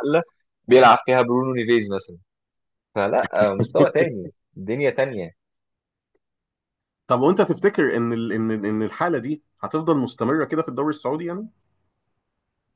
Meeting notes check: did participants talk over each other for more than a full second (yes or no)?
no